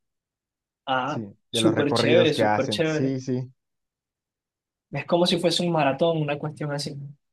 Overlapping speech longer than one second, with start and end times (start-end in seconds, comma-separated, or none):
1.1-3.2